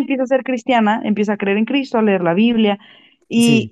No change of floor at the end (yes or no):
no